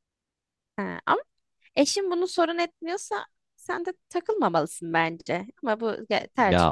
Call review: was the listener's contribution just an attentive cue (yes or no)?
no